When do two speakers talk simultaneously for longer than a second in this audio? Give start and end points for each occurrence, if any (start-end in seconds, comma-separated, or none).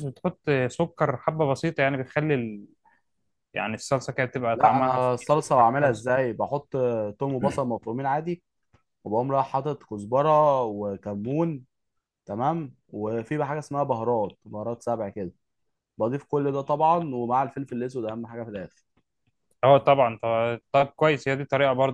4.5-6.1